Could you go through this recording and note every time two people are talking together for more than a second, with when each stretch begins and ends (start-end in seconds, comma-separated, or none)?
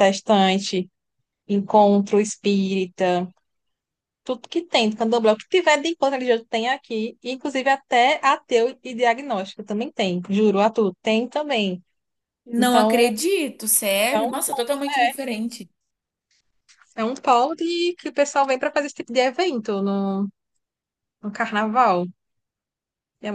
none